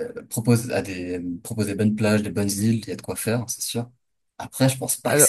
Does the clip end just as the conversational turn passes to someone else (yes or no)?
no